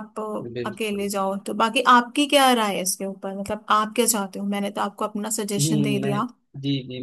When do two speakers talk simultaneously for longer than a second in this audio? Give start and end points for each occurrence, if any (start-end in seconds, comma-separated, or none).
none